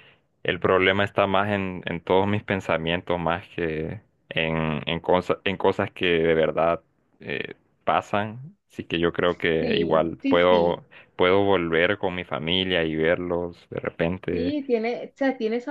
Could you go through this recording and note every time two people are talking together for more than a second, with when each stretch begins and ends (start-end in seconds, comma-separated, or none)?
9.6-10.8